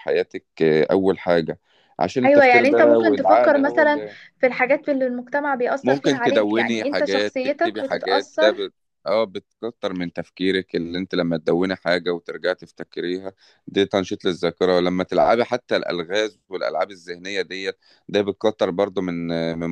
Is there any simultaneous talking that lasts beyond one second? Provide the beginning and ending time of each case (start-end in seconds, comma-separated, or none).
2.2-4.0, 5.8-8.7